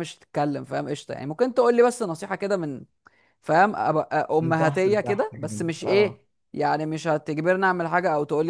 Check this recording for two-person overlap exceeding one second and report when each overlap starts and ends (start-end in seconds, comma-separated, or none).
4.4-6.2